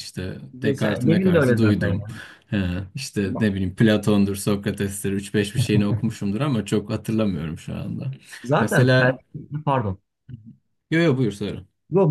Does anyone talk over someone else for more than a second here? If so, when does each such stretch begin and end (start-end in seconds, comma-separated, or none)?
0.5-2.0